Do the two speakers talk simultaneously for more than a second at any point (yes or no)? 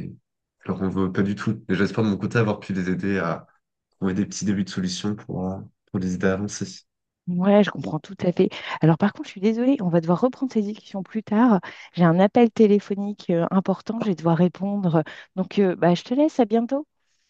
no